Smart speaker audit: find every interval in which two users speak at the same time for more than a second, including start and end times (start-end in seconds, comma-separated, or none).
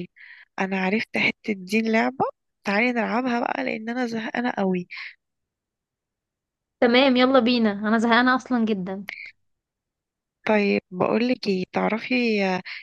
none